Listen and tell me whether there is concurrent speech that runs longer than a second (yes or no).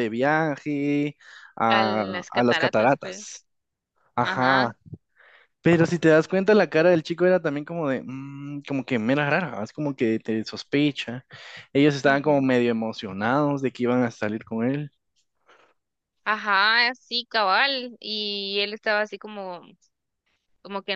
yes